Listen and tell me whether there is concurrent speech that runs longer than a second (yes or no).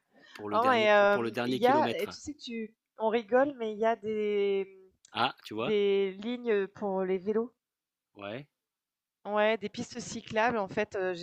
yes